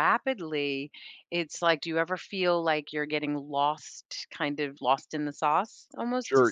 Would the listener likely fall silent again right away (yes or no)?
no